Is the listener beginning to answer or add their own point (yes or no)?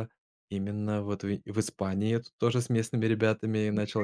no